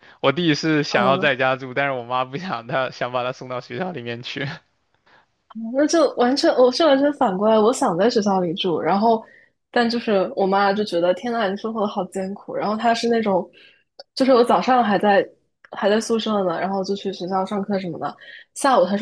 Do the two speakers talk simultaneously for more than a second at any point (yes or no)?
no